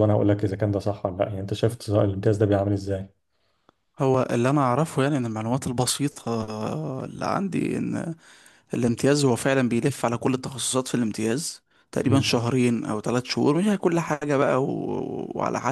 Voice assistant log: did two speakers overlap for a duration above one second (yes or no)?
no